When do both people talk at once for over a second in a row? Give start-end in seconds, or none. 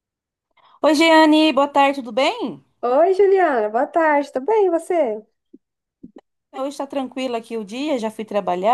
none